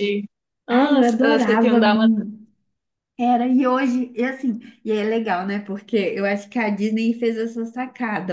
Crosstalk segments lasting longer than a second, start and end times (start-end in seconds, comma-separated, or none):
0.7-2.2